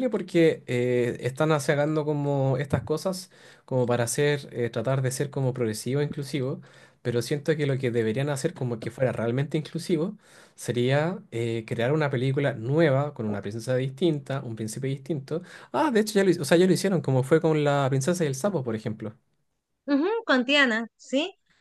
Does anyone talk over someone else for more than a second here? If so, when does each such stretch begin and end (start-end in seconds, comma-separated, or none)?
none